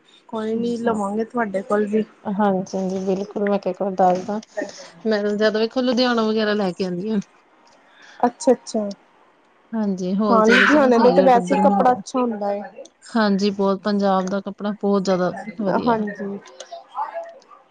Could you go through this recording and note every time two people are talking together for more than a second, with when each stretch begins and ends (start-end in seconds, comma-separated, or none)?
10.3-12.0